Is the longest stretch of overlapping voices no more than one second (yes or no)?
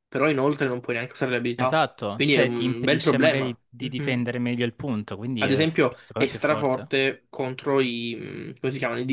no